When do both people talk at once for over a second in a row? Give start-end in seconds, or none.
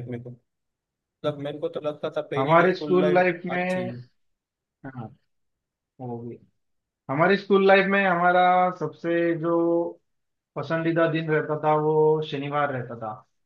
2.4-3.9